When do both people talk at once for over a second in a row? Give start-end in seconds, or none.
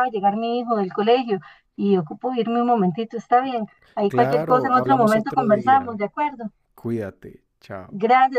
4.1-6.0